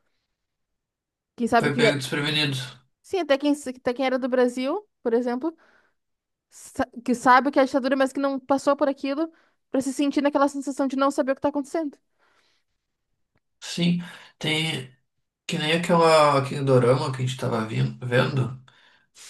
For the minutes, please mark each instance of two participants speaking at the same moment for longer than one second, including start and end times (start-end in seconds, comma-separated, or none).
none